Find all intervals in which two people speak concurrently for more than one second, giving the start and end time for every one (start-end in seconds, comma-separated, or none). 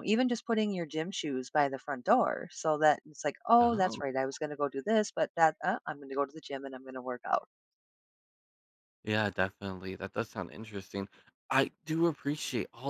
none